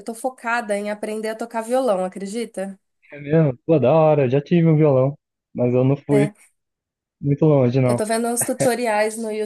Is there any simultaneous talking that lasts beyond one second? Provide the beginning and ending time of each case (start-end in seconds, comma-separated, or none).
none